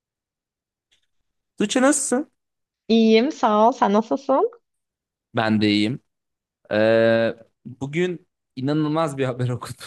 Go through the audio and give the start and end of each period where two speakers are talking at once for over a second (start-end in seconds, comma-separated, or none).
none